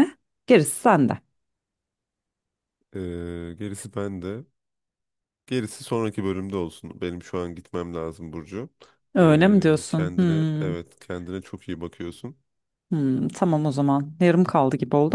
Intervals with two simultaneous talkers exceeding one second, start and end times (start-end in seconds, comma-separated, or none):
9.2-10.8